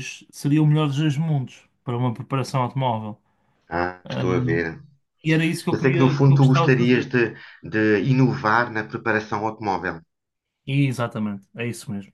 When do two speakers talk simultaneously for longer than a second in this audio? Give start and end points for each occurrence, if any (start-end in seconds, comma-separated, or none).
5.7-7.1